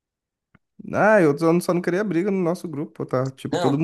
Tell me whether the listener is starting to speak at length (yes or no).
yes